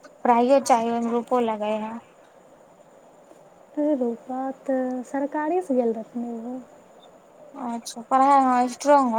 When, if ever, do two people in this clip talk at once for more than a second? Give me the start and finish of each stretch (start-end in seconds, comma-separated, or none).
none